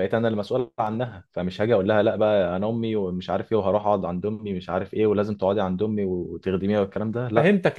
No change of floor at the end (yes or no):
no